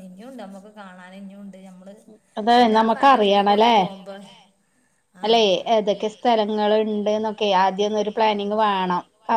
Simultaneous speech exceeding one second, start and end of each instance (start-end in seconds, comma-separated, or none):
none